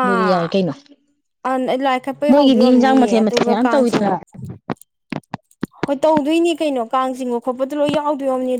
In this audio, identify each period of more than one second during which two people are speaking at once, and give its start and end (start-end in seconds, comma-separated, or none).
2.3-4.1